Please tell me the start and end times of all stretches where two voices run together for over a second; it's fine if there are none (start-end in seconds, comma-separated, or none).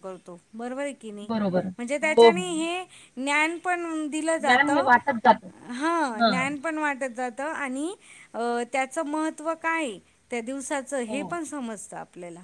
none